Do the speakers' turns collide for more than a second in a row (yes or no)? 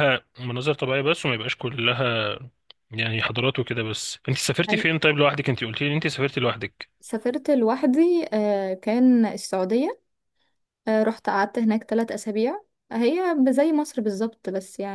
no